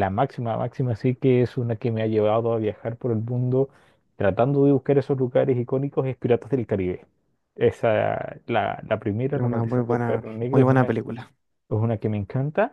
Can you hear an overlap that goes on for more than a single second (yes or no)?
yes